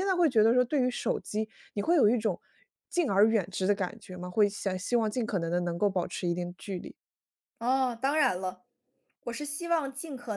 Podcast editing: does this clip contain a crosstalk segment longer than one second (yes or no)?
no